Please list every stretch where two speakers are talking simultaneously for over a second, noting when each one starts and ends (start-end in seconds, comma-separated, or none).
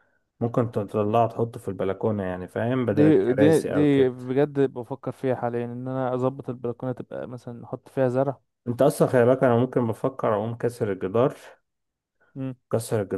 2.9-4.2